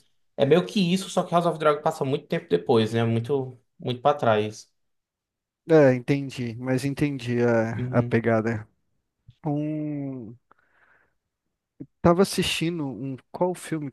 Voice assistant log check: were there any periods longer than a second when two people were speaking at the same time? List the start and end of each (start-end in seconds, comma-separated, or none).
none